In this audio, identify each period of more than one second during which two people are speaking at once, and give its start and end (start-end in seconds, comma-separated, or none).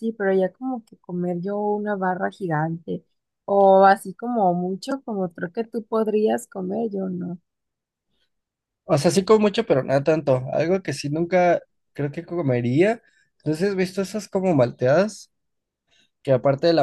none